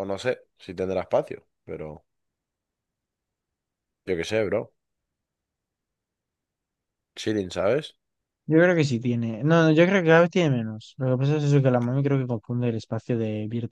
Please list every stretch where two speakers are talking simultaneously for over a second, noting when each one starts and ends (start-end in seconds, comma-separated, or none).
none